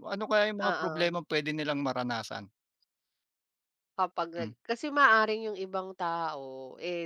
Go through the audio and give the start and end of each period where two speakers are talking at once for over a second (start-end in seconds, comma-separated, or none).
none